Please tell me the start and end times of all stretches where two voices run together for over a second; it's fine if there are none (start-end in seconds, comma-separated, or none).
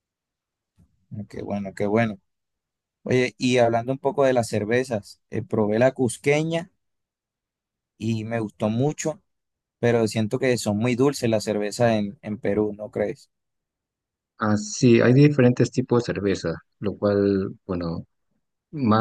none